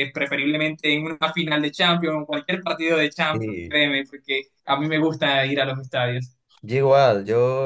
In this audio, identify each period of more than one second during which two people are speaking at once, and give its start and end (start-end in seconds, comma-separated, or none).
none